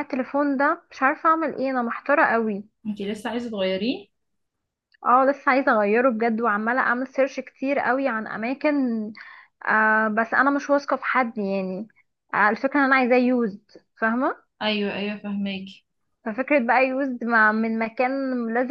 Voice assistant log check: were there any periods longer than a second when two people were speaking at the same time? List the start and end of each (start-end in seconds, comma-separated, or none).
none